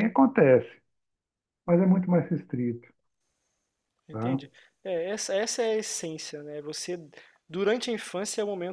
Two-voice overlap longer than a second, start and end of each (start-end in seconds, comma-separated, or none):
none